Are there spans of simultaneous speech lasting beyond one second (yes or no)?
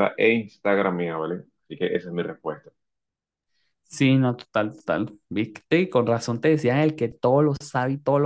no